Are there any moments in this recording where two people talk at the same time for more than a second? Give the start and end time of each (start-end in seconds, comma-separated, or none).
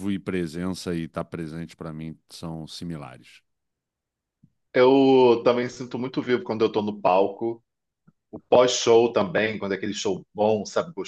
none